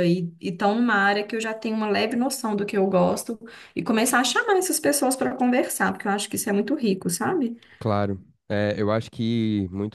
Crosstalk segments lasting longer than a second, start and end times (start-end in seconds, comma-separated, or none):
none